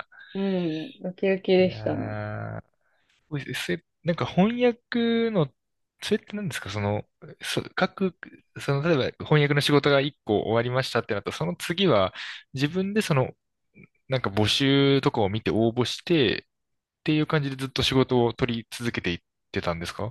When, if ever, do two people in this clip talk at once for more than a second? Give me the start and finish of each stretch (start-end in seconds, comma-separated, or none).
none